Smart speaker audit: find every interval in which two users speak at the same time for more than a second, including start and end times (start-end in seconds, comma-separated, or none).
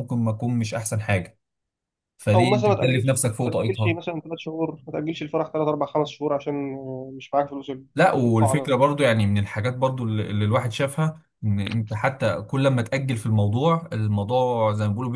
2.3-4.0